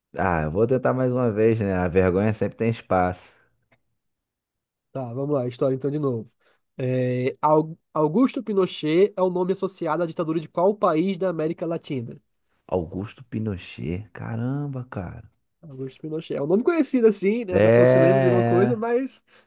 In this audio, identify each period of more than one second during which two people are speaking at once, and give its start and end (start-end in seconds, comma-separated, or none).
17.5-18.8